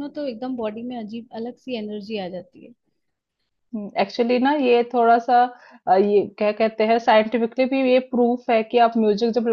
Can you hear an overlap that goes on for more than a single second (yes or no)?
no